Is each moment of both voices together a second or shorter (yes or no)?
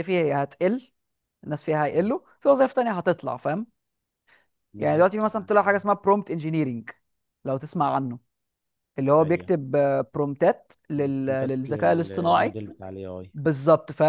no